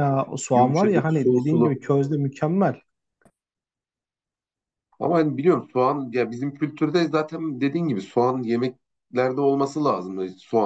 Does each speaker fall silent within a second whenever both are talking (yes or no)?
no